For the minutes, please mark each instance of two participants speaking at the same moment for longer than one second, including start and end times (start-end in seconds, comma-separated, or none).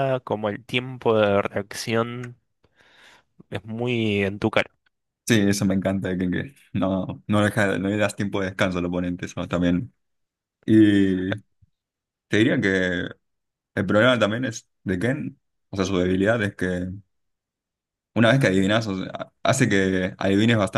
none